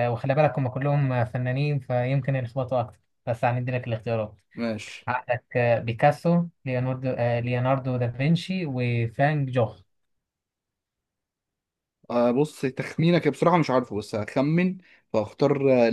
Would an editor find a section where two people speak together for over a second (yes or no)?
no